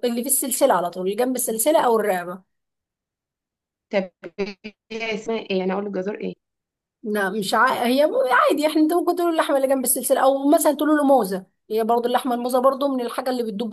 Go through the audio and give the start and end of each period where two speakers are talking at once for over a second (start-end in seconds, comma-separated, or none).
none